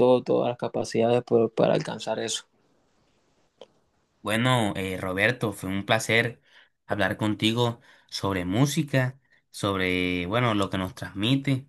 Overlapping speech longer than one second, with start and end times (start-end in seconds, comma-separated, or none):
none